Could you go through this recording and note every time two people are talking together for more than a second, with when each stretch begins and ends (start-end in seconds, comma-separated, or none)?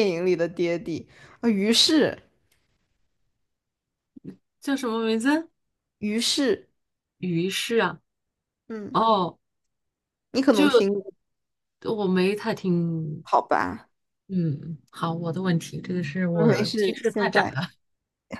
16.3-17.6